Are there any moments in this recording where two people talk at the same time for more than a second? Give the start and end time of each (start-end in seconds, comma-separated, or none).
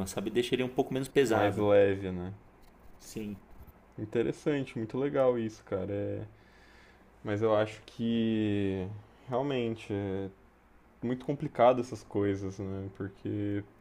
none